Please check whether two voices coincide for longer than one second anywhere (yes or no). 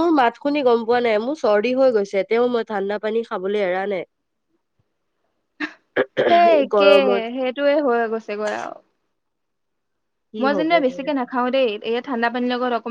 no